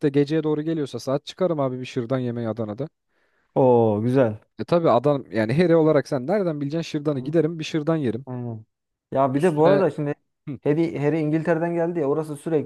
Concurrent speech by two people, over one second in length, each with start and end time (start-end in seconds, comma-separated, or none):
none